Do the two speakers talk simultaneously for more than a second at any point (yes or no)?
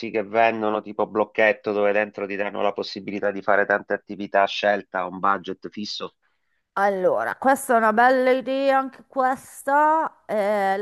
no